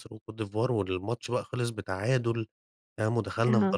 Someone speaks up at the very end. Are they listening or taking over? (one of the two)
taking over